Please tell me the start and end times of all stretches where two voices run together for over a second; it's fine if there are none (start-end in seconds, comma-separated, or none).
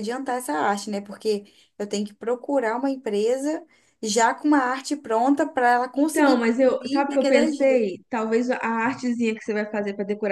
5.9-7.8